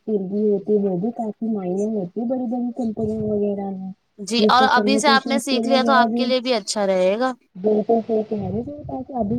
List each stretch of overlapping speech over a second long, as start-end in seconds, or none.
4.4-6.1